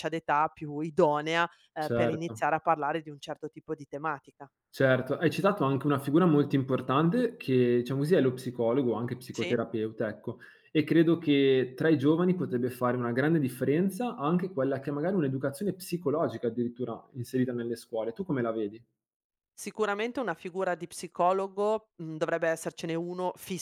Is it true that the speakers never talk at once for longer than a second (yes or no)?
yes